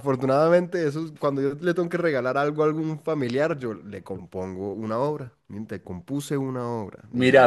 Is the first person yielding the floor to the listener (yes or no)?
yes